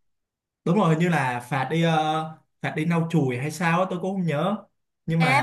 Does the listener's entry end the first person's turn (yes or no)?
yes